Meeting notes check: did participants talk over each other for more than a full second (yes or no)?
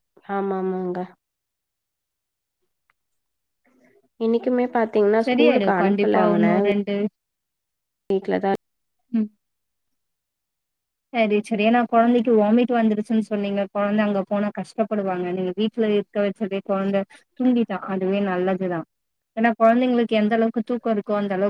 yes